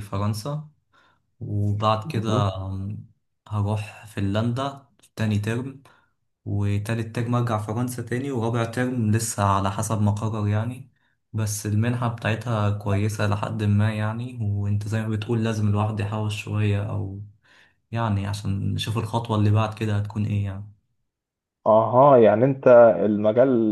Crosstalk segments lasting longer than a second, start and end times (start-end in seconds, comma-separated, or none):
none